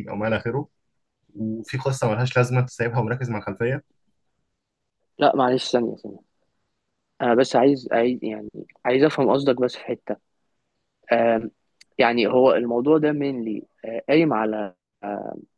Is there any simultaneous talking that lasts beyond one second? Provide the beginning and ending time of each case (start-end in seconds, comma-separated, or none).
none